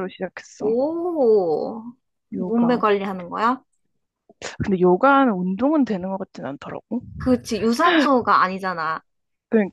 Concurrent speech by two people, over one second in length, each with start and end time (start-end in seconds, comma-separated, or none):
none